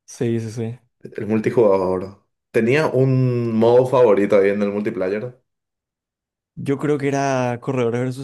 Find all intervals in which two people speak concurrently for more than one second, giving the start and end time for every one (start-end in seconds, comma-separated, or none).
none